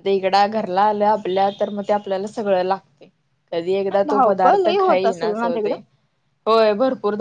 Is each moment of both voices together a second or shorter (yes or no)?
no